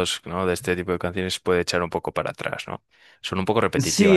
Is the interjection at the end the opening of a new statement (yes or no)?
yes